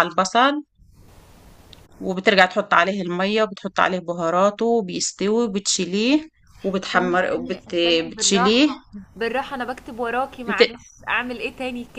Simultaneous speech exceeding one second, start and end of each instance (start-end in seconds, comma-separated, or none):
7.0-8.7